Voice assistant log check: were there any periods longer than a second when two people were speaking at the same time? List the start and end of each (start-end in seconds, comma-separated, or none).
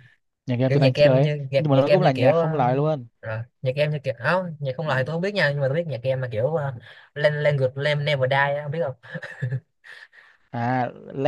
0.7-2.5